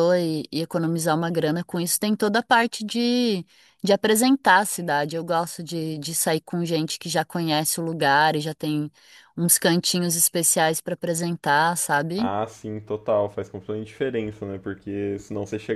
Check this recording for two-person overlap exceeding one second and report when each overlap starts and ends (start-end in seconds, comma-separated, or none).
none